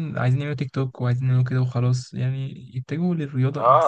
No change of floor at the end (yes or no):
no